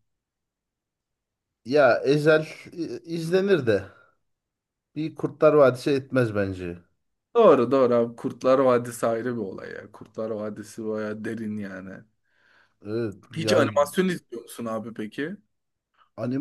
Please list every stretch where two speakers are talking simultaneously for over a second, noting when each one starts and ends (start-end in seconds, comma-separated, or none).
none